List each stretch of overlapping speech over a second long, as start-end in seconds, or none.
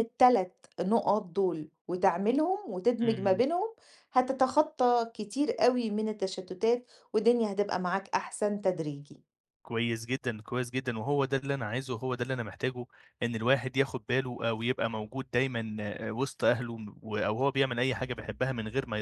none